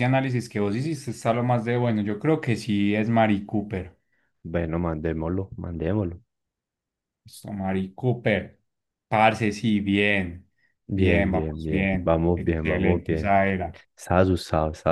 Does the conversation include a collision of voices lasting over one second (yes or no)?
yes